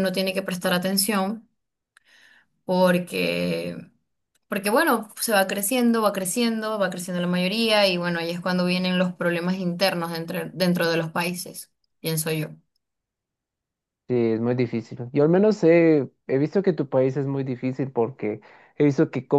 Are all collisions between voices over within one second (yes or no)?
yes